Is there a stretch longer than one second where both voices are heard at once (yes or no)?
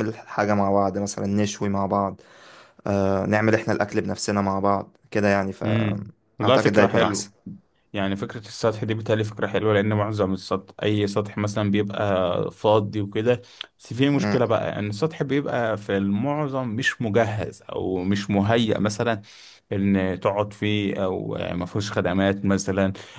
yes